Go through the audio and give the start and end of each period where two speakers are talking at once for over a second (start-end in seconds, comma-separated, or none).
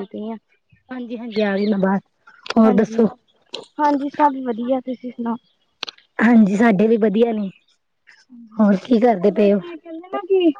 none